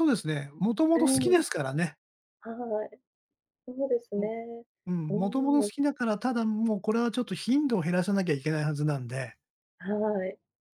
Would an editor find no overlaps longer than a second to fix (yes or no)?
yes